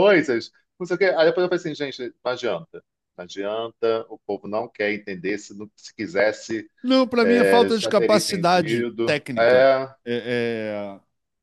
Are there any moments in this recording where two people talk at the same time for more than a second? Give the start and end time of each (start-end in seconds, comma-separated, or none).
7.2-9.7